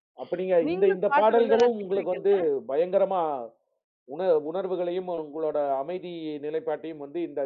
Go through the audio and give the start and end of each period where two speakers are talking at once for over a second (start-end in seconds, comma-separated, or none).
0.7-2.2